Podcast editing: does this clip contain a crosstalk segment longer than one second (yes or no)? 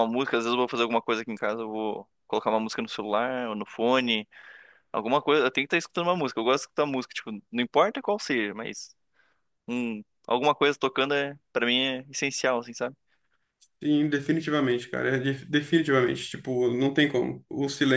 no